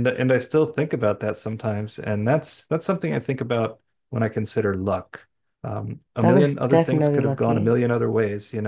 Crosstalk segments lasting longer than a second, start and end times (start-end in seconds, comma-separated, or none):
6.2-7.7